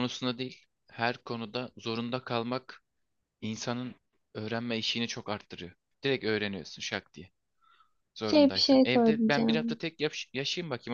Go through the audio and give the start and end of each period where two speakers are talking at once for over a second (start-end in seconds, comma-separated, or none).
8.2-9.8